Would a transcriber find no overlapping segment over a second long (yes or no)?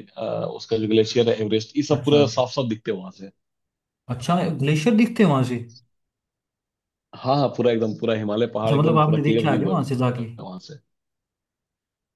no